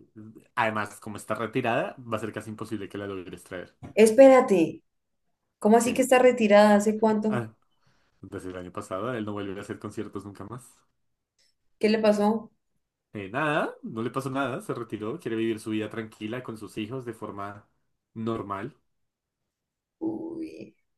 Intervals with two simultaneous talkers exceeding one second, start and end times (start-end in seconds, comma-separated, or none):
none